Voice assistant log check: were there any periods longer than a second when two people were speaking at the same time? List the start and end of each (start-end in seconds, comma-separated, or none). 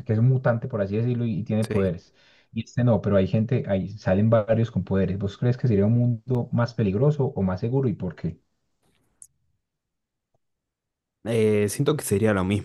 none